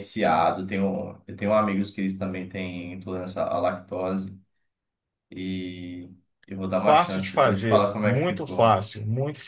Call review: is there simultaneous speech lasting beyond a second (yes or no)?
yes